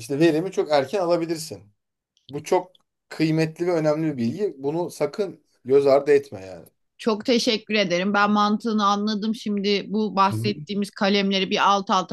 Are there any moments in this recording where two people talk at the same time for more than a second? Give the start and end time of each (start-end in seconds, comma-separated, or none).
none